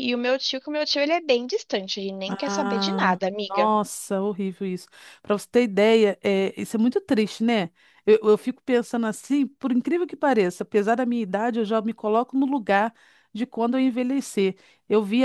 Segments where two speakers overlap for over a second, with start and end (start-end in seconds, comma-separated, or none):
2.3-3.7